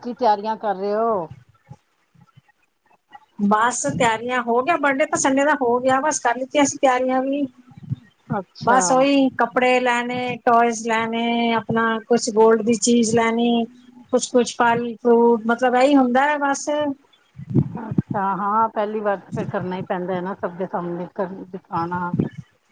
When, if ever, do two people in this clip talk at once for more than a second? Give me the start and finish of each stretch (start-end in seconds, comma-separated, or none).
none